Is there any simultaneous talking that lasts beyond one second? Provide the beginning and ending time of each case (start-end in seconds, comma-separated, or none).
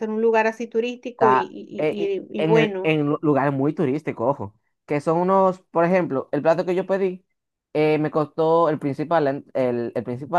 1.1-3.0